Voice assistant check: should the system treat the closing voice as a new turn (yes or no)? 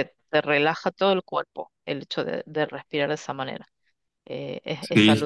yes